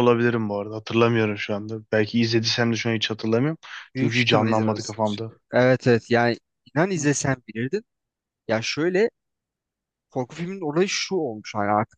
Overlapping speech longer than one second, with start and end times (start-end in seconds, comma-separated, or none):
4.0-5.3